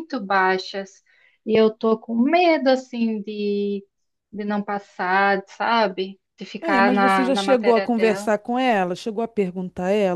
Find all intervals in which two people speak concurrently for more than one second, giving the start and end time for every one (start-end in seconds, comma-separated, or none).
6.6-8.3